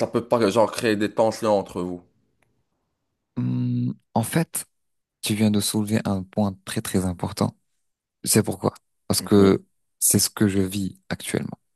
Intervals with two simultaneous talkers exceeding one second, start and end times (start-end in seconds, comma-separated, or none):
none